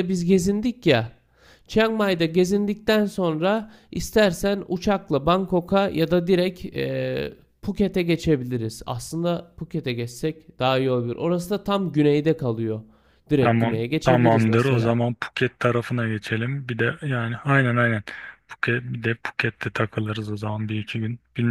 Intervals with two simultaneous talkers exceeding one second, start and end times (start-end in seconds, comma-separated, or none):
13.4-15.0